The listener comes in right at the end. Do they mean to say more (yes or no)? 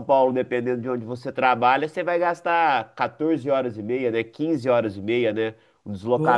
no